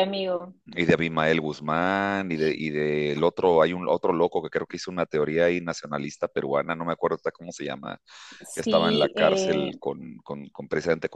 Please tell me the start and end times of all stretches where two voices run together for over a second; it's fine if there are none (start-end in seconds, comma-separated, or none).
8.6-9.8